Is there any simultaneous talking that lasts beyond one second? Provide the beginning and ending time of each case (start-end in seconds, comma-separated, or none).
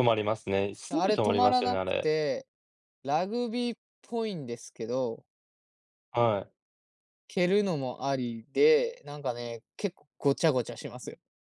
0.9-2.1